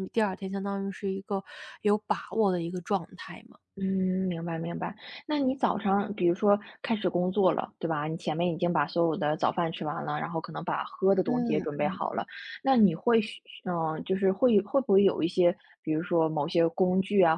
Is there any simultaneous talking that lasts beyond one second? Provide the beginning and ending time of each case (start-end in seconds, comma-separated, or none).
none